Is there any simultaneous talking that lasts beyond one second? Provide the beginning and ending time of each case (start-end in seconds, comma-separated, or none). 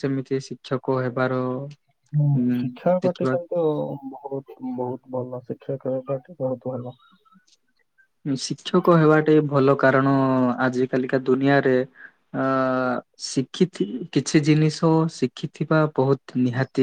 none